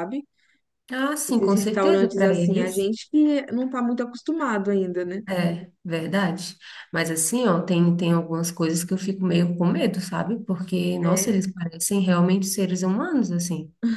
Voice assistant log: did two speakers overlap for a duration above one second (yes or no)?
yes